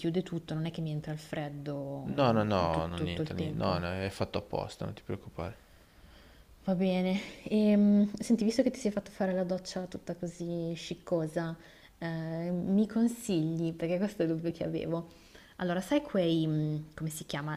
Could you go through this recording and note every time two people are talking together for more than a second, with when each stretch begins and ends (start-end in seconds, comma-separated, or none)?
2.2-3.8